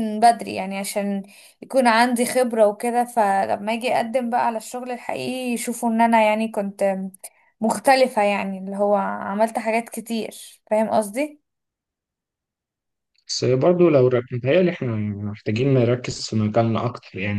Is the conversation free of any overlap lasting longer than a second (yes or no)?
yes